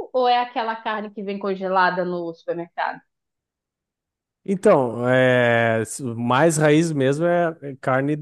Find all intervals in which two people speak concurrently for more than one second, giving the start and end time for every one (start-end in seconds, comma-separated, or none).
none